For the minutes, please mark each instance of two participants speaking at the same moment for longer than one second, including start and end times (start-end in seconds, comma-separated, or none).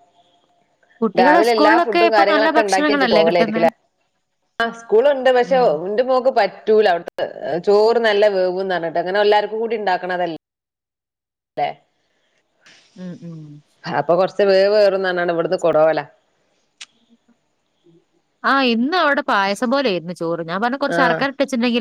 1.2-3.7